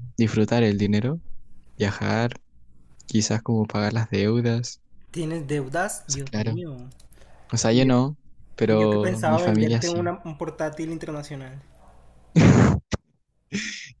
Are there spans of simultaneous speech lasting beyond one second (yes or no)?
yes